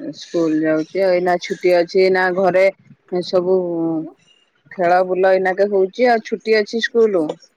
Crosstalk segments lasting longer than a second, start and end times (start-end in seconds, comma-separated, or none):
4.8-6.3